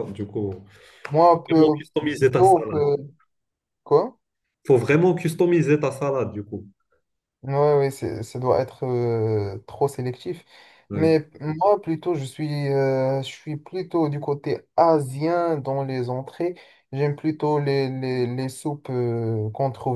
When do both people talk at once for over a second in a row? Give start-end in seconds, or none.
1.3-2.9